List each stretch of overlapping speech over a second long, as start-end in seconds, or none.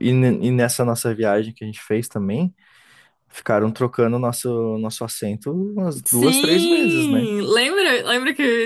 6.0-7.3